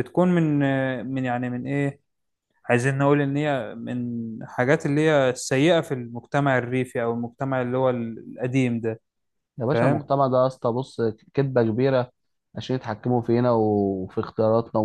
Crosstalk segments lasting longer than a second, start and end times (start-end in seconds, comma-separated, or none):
none